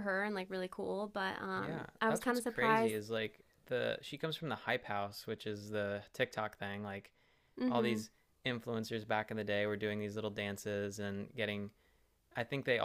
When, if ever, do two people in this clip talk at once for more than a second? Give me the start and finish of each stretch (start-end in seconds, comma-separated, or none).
1.5-3.0